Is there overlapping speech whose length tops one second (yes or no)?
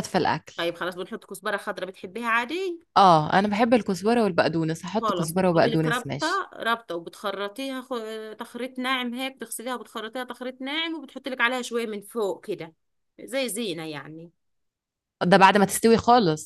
yes